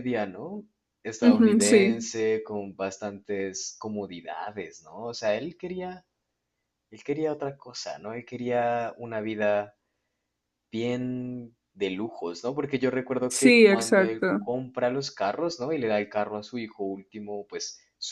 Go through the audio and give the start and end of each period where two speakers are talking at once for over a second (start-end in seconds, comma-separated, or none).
13.3-14.5